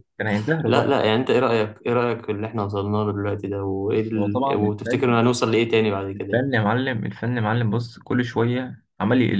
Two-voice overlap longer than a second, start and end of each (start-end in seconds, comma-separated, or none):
3.9-5.1